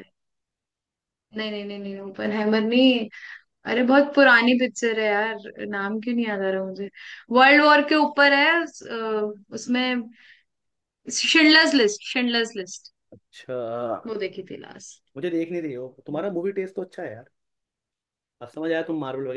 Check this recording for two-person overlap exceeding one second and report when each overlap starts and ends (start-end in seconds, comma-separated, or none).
none